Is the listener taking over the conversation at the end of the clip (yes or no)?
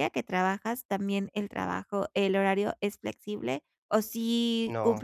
no